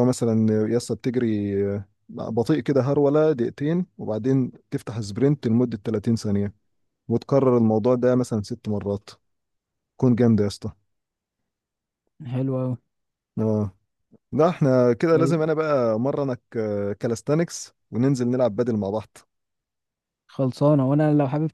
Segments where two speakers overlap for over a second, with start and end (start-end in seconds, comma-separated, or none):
none